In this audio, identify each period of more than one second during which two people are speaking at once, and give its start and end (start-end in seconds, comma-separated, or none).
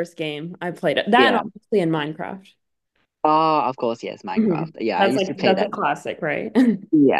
4.4-5.7